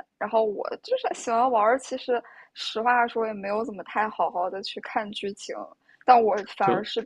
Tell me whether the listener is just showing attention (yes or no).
yes